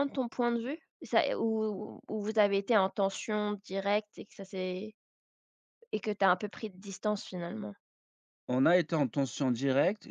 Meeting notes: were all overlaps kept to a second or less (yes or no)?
yes